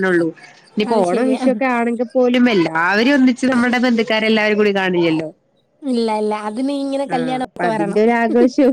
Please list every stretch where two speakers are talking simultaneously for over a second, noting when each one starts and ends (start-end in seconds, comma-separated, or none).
none